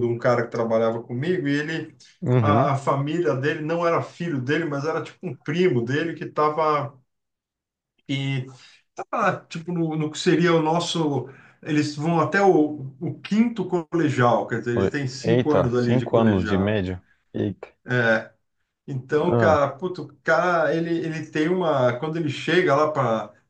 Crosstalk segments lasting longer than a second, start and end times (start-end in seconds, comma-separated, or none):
15.2-16.8